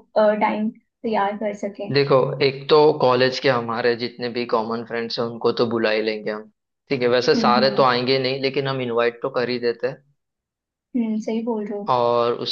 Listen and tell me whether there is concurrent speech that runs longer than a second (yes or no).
no